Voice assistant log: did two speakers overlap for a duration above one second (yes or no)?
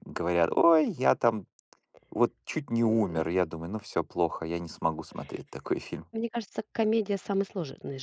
no